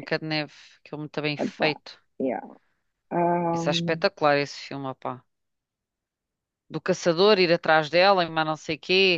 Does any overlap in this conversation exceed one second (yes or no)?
no